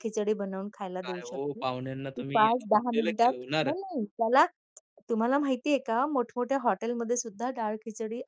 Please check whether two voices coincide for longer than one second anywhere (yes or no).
yes